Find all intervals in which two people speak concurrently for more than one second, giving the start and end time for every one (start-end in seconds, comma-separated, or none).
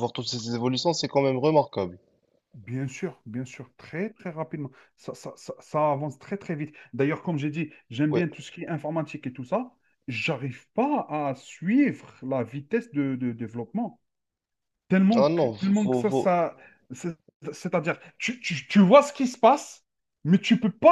15.1-16.3